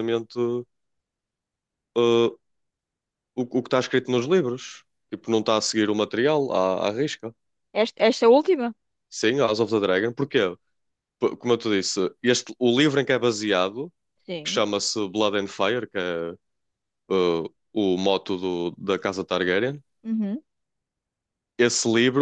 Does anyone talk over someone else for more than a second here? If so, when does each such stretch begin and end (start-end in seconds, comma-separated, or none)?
none